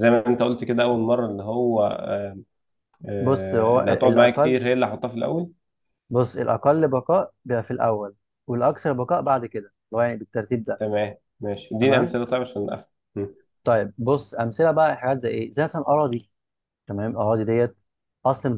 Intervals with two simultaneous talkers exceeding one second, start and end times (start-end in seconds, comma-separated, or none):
3.2-4.6